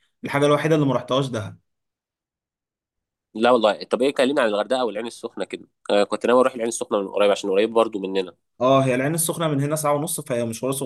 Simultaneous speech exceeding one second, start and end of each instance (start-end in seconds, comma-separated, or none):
none